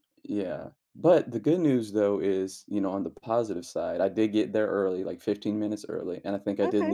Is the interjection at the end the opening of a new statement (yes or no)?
no